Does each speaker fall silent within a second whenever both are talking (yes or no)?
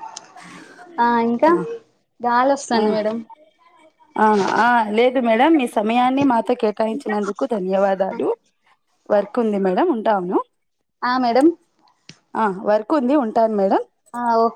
yes